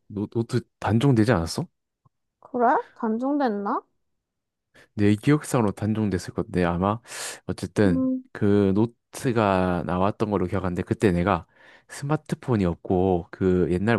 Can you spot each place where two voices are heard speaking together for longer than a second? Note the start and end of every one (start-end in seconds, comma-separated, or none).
none